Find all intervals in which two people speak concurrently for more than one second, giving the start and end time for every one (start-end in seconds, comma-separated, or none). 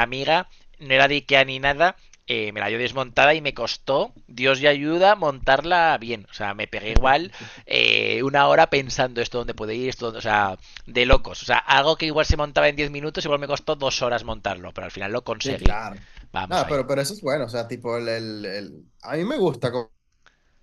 none